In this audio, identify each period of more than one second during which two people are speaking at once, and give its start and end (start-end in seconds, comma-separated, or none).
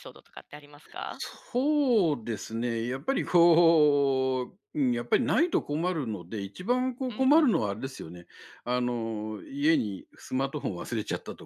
none